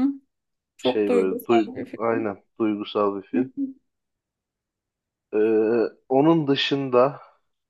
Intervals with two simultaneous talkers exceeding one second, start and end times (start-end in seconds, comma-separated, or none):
0.8-2.3